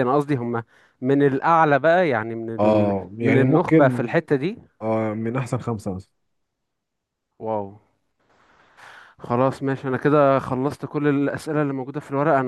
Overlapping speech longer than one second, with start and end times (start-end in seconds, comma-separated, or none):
2.6-4.2